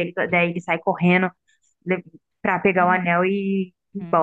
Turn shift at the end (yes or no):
yes